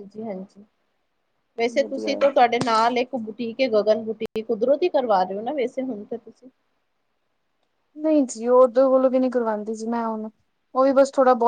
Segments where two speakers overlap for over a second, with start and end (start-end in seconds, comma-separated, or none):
none